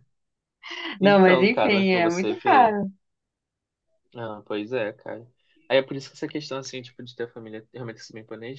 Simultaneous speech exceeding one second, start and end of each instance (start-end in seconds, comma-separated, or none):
1.0-2.7